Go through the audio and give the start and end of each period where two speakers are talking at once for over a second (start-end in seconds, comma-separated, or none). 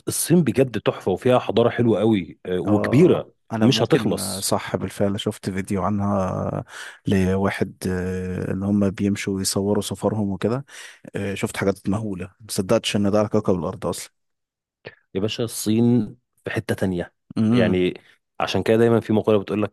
2.6-4.5